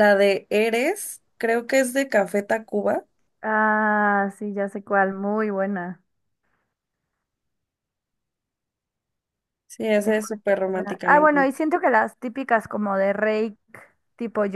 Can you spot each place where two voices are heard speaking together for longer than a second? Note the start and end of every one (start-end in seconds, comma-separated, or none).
10.0-11.5